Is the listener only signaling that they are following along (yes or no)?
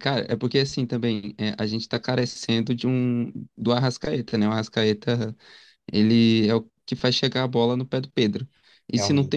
yes